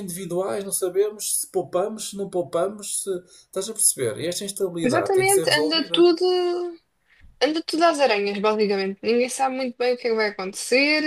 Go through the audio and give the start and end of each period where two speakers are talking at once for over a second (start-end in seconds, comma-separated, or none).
4.8-6.1